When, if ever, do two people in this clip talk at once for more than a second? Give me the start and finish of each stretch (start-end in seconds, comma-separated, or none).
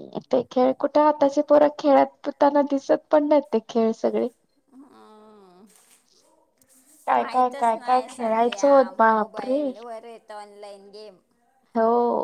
7.2-9.6